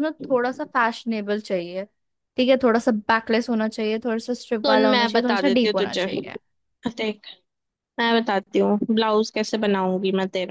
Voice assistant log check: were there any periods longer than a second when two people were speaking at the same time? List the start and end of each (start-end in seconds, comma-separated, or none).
4.6-6.1